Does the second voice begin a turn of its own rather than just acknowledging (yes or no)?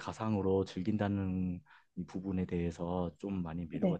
no